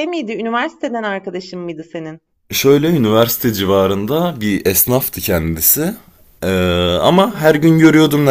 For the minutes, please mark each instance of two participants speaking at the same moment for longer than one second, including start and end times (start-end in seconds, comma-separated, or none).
none